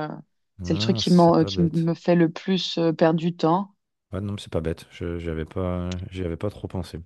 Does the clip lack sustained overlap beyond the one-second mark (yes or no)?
no